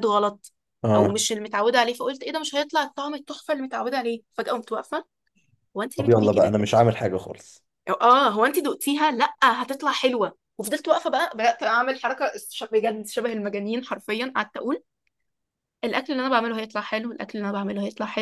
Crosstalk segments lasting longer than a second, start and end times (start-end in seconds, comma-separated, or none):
none